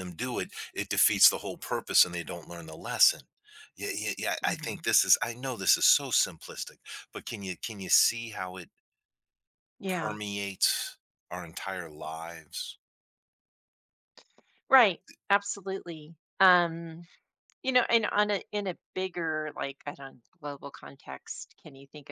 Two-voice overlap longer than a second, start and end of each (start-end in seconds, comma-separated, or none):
none